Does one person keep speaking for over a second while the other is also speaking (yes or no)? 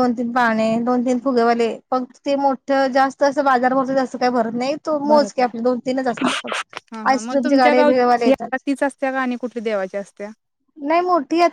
yes